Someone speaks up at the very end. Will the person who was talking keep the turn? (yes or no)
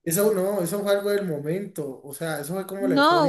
no